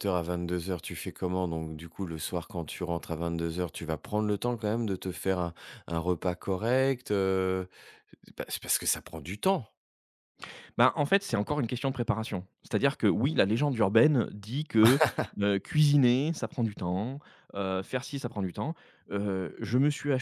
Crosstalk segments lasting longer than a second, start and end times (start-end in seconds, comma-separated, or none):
none